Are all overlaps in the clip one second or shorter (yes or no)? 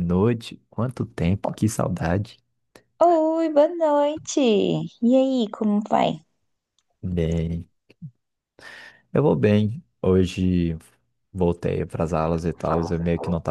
yes